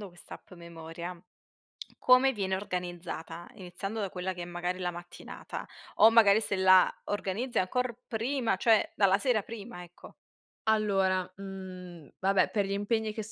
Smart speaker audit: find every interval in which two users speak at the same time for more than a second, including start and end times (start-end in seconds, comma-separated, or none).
none